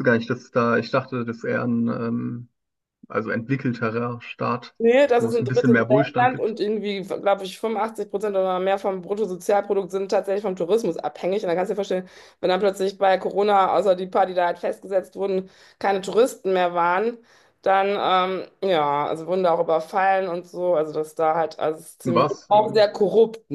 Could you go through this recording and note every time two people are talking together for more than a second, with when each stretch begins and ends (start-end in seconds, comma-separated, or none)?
5.2-6.5